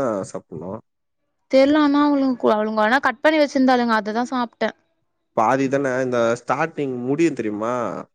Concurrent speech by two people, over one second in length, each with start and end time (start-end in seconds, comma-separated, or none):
none